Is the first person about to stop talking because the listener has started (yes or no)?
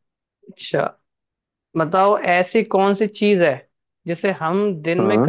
no